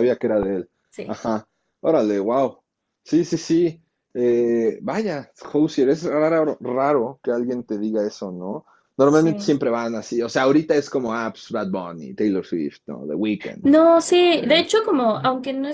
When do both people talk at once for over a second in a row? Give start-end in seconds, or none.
none